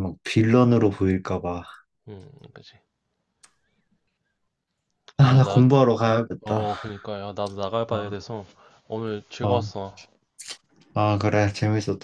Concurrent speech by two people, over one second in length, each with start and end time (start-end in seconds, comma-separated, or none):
none